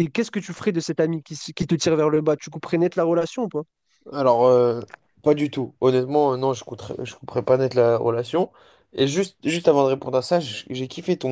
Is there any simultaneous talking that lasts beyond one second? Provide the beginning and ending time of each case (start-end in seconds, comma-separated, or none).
none